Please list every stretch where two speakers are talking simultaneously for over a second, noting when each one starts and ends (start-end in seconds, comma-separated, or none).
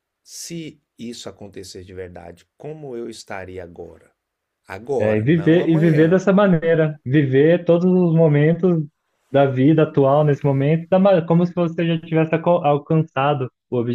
5.0-6.2